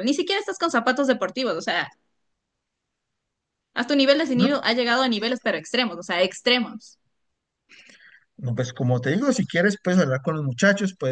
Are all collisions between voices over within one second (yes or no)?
yes